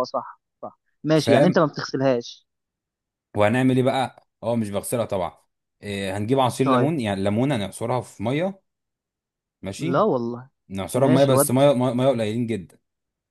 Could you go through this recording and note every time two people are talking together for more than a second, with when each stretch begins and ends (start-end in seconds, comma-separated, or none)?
none